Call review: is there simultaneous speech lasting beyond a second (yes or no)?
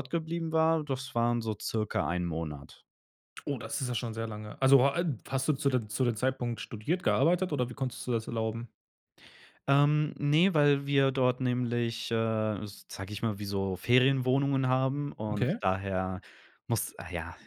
no